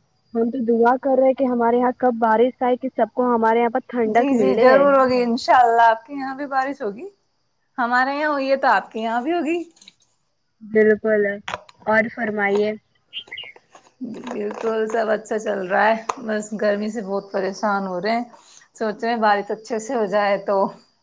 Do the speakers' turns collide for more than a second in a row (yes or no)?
no